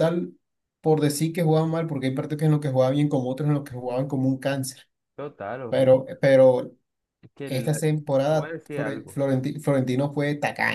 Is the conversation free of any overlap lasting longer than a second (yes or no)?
no